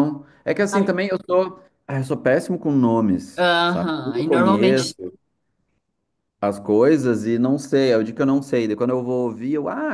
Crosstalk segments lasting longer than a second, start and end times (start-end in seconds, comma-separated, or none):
3.4-4.9